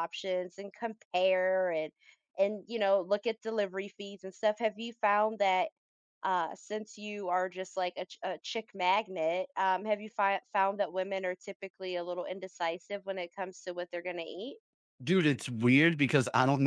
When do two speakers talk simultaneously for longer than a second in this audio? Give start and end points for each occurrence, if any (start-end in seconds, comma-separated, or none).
none